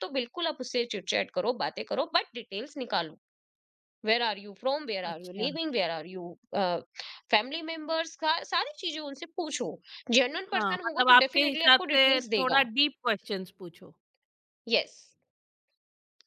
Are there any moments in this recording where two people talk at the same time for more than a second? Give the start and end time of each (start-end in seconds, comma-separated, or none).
10.5-12.7